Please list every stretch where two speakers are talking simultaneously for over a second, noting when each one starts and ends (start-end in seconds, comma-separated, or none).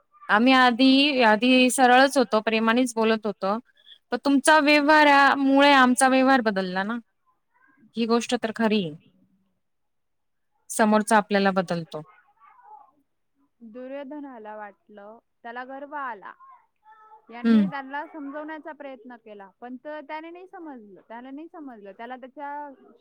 none